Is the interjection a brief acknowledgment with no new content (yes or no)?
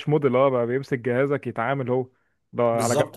yes